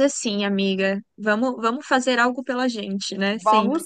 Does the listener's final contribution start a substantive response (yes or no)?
yes